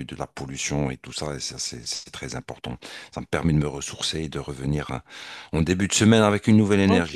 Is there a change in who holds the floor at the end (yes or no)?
yes